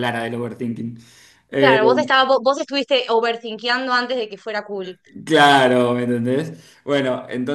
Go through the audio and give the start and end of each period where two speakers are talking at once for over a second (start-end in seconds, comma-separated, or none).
none